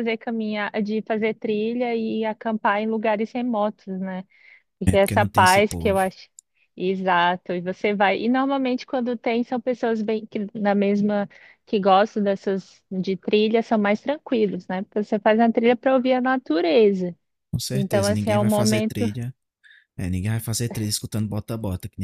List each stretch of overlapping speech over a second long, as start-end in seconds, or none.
4.8-6.0, 17.7-19.1